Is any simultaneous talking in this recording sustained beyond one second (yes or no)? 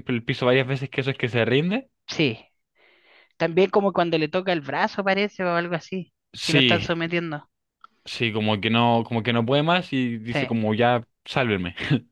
no